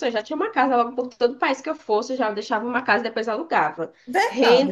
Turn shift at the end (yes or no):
yes